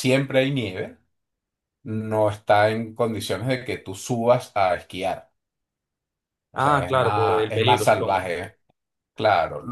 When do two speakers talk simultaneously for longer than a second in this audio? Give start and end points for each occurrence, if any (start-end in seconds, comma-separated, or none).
6.5-8.3